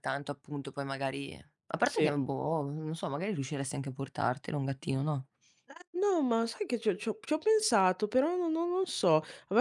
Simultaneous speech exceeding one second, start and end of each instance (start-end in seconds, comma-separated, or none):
none